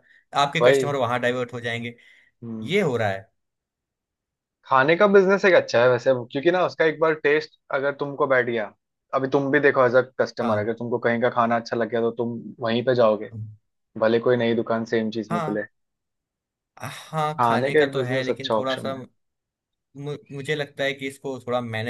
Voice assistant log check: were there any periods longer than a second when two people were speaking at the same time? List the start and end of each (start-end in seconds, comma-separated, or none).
17.4-18.9